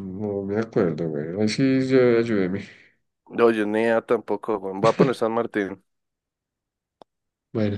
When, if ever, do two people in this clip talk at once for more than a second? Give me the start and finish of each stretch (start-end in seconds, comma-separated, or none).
none